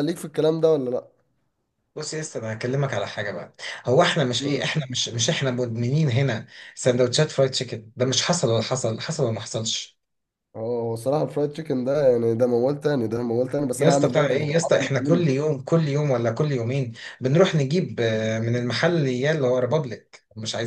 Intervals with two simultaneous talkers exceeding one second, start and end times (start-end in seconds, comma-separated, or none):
13.8-15.2